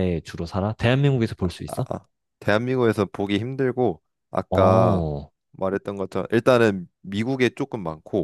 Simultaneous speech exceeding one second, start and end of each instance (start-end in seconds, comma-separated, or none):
none